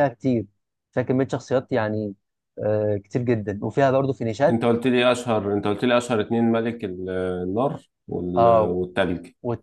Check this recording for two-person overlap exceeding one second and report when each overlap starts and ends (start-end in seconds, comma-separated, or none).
none